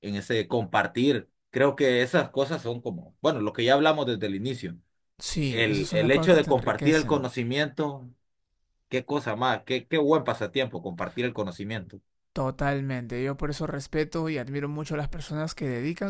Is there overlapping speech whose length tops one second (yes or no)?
yes